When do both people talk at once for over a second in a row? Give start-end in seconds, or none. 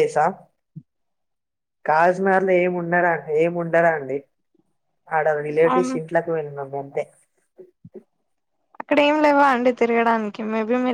none